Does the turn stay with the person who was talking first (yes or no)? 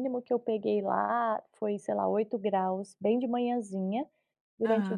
yes